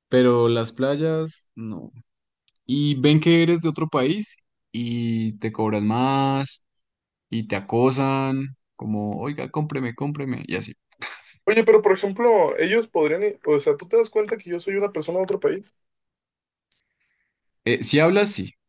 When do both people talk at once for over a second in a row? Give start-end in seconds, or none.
none